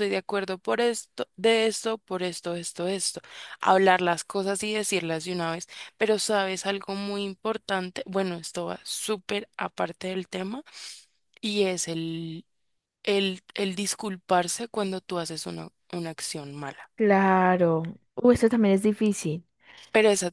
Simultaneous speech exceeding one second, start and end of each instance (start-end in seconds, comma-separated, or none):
none